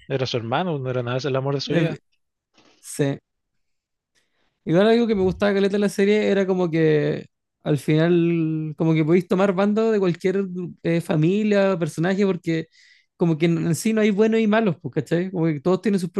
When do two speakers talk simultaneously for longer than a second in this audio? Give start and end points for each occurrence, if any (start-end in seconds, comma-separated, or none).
none